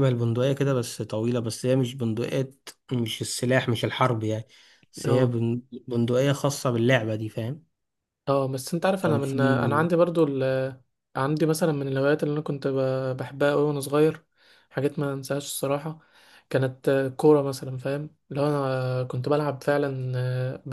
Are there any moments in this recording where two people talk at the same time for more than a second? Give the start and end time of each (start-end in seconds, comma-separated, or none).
none